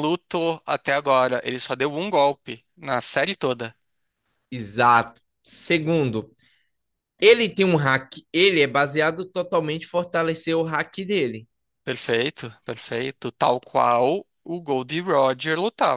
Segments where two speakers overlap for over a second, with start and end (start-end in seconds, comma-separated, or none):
none